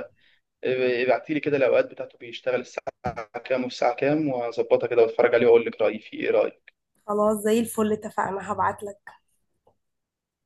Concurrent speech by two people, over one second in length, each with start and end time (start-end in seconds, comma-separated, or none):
none